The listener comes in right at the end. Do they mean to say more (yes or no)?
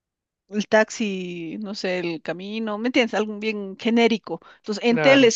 no